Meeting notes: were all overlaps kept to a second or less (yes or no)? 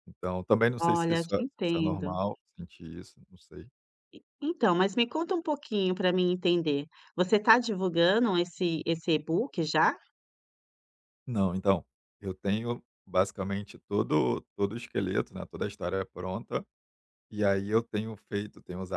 no